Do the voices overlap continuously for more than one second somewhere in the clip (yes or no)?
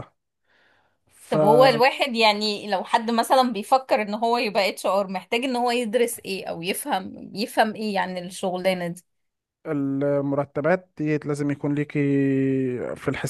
no